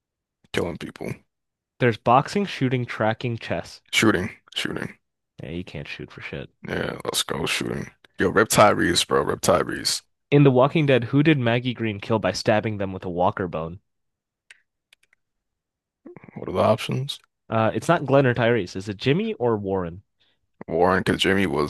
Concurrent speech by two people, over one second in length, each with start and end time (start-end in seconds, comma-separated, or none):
none